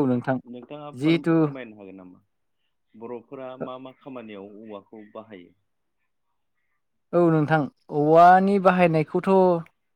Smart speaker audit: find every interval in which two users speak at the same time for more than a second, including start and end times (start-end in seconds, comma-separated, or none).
none